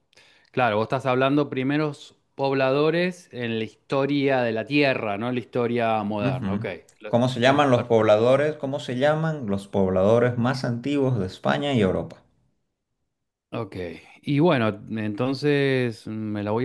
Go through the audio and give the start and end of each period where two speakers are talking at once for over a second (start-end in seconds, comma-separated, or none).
6.2-8.3